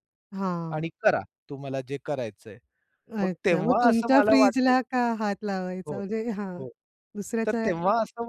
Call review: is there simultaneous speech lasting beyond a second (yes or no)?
yes